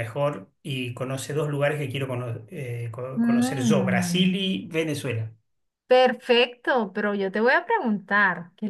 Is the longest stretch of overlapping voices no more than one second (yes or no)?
no